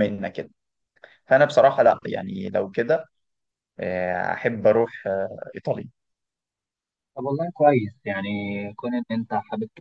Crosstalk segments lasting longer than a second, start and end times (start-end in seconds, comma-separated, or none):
none